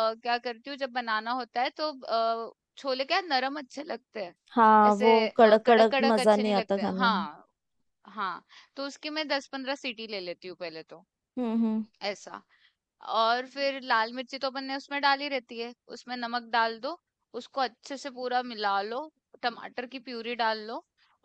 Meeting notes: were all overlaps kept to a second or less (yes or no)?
no